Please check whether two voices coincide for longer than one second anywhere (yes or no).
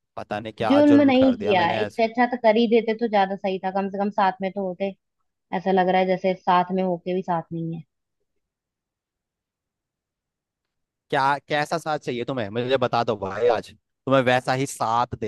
yes